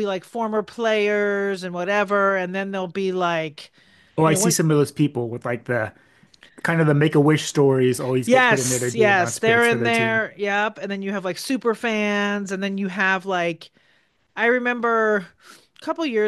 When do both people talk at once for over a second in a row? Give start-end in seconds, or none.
8.3-10.2